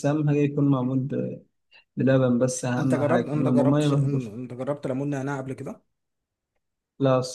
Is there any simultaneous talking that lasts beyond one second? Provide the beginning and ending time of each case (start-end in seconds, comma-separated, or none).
2.8-4.3